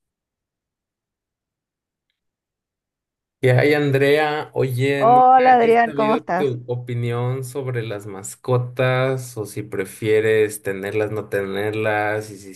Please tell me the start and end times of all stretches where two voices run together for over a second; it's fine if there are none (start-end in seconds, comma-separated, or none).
5.0-6.6